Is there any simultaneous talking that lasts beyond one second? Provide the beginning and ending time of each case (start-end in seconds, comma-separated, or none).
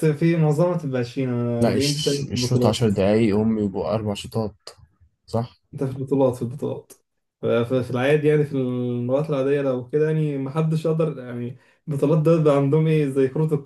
1.6-2.9